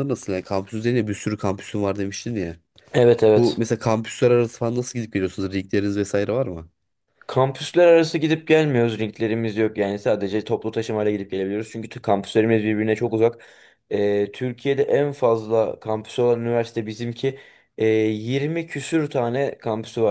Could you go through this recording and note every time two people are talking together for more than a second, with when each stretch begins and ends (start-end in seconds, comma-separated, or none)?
none